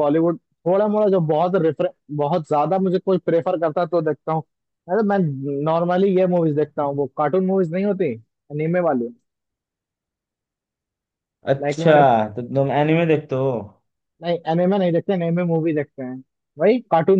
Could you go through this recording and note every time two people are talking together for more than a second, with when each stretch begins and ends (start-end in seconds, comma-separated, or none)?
none